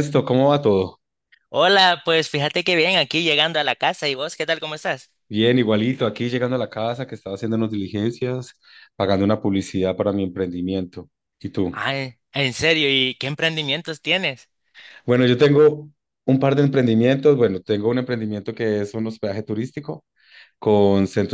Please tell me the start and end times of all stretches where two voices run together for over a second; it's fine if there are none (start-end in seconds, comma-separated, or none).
none